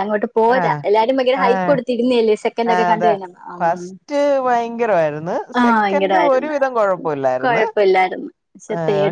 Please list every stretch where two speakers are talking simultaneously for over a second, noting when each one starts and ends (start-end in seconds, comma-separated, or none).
none